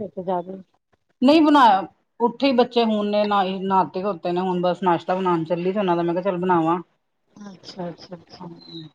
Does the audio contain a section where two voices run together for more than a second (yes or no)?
no